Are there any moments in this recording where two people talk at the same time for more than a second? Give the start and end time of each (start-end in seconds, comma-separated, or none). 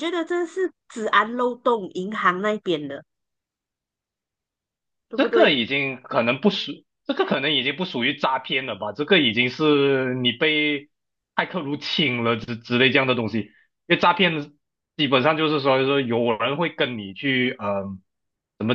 none